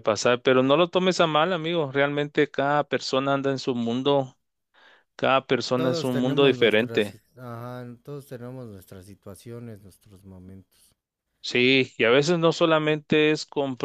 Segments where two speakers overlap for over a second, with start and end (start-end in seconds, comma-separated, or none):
5.8-7.2